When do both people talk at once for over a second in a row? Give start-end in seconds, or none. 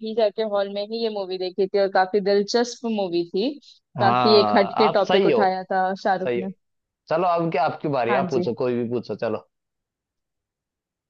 4.0-5.4